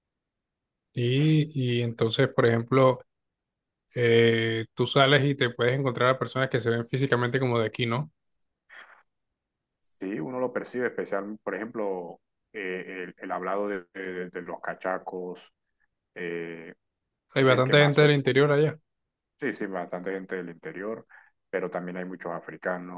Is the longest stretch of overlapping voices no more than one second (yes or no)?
no